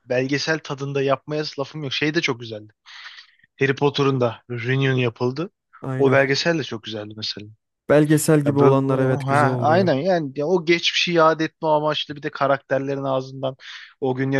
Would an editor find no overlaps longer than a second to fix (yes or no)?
no